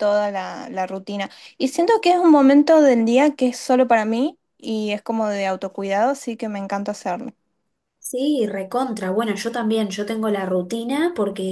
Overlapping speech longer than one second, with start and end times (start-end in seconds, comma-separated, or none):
none